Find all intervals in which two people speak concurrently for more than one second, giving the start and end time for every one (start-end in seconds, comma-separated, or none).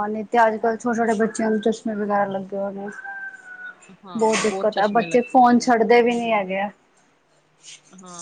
4.2-6.4